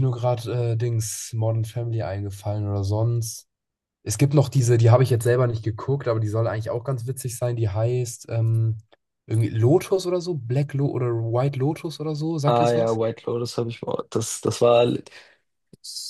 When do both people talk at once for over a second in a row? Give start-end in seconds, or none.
none